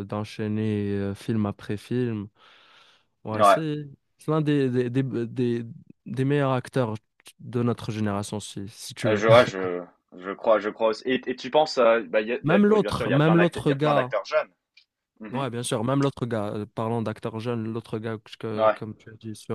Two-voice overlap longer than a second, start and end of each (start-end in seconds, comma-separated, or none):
12.4-14.1